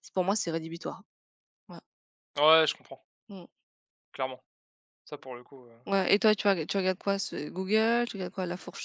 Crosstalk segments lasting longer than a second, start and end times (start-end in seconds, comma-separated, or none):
none